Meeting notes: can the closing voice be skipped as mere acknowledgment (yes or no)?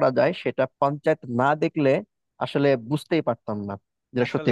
no